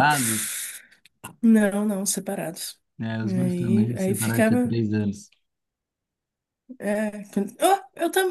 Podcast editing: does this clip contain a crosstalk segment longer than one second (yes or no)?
yes